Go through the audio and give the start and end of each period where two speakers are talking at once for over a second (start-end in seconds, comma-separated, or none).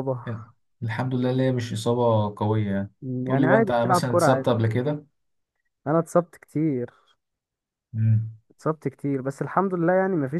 3.0-4.5